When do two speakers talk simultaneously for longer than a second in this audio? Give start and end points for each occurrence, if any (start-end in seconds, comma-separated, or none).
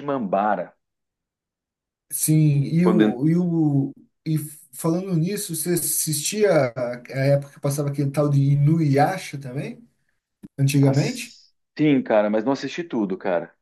none